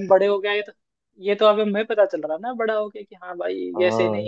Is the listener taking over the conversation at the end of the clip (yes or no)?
yes